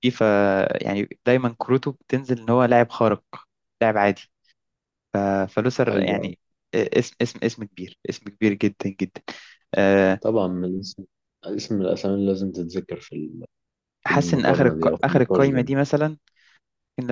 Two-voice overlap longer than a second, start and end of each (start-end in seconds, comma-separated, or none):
14.1-15.6